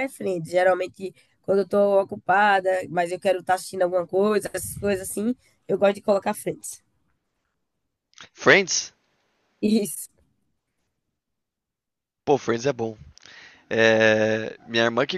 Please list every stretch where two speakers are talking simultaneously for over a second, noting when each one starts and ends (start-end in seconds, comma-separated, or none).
none